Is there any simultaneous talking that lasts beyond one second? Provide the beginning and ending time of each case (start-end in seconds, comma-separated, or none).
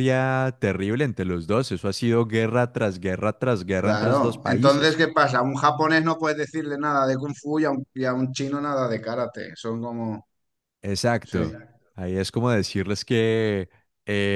3.8-5.0